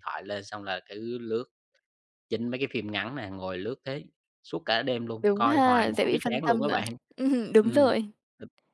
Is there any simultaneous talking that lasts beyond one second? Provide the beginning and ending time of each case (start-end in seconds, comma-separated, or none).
5.2-6.8